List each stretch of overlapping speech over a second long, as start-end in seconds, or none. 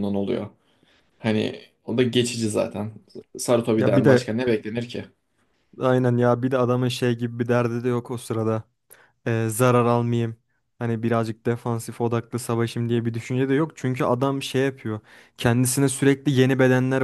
none